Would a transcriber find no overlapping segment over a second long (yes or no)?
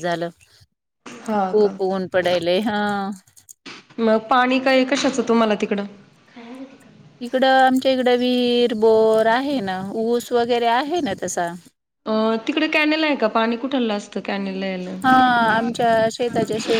yes